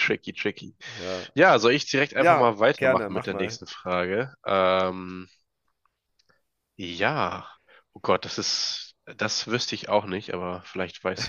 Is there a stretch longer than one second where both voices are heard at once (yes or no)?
yes